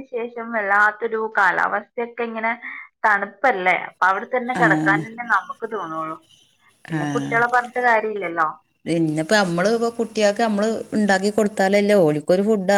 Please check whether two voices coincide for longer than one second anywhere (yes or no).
no